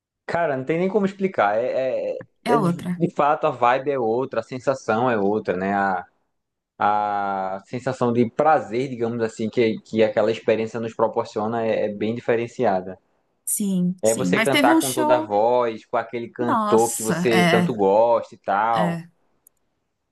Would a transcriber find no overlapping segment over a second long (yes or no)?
no